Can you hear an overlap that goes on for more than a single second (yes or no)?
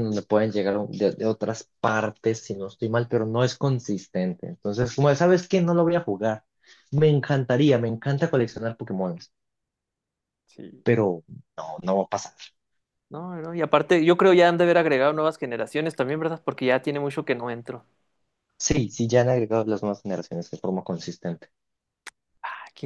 no